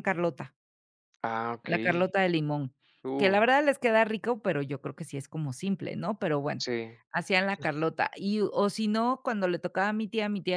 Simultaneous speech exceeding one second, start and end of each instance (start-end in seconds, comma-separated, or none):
none